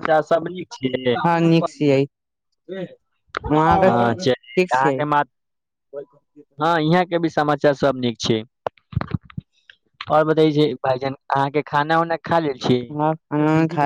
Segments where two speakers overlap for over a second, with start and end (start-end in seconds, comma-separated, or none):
3.7-5.0